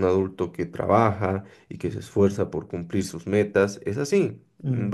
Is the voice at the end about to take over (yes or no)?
no